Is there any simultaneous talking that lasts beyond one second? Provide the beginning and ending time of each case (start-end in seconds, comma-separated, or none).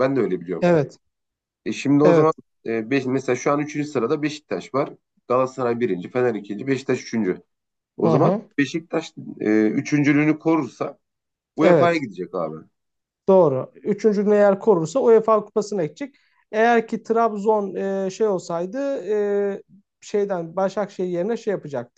none